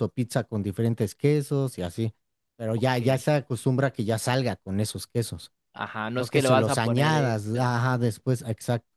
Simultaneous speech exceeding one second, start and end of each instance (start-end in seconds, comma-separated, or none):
6.1-7.7